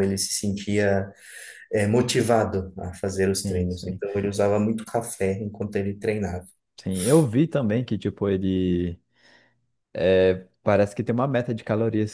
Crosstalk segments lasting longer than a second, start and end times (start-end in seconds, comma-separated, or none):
none